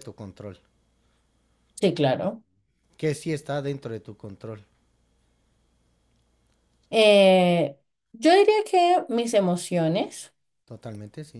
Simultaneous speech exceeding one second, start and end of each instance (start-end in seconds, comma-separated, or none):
none